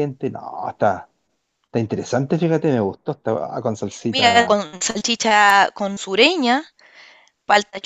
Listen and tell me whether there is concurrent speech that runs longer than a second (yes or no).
no